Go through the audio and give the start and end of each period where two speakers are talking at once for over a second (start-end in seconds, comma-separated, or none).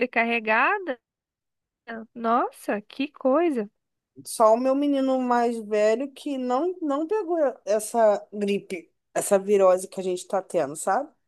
none